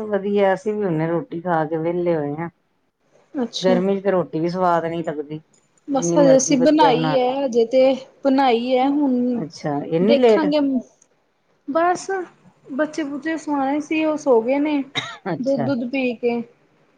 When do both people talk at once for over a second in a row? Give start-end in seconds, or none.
6.0-7.3